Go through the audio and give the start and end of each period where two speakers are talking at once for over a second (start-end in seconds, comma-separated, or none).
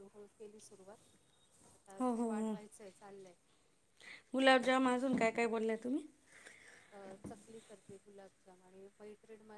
none